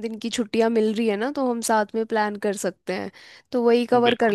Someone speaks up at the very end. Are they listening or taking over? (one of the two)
listening